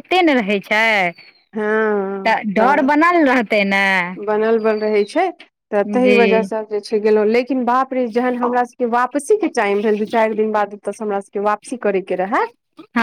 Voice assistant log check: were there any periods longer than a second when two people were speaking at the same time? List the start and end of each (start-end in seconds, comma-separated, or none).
1.6-2.9